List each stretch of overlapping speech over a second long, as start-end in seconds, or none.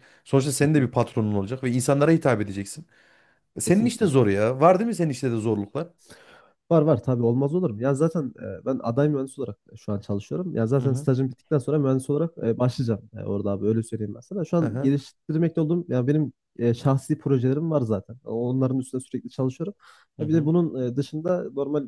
none